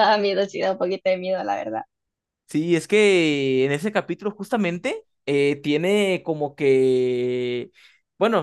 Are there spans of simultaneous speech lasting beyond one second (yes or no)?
no